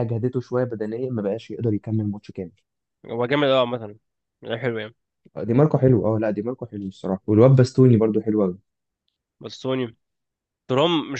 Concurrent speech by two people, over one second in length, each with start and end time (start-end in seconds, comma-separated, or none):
none